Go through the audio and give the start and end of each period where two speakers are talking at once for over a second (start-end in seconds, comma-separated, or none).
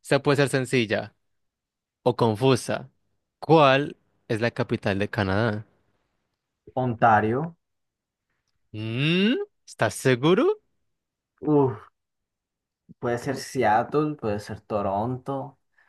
none